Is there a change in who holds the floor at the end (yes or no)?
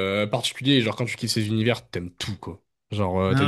no